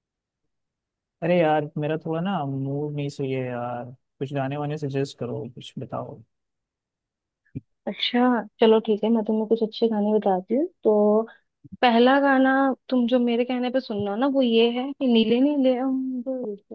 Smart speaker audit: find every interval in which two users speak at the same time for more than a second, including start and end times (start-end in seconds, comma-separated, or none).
none